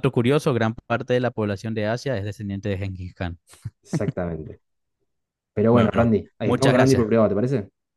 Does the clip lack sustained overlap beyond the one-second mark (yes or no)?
no